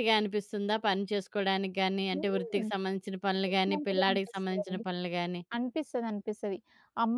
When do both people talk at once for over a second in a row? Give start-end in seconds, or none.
3.5-4.8